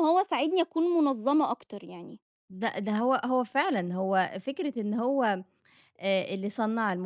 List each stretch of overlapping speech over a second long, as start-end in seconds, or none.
none